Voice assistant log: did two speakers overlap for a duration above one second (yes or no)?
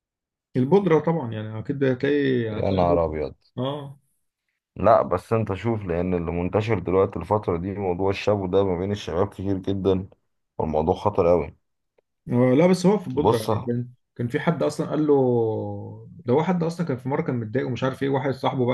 no